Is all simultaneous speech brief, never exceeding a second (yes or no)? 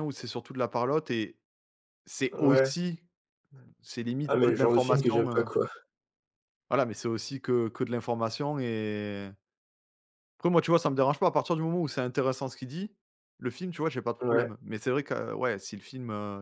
no